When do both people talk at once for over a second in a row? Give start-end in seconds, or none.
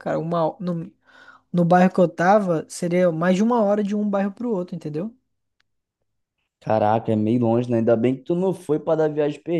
none